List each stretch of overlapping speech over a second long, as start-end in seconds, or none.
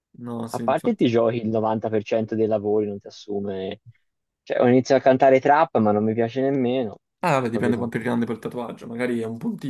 none